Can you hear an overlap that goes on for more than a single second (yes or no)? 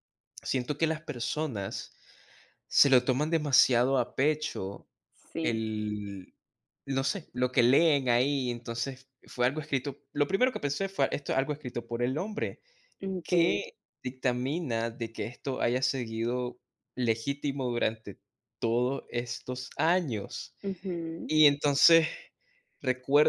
no